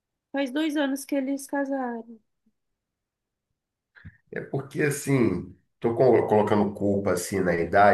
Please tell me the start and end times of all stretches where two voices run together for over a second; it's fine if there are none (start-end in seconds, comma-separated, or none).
none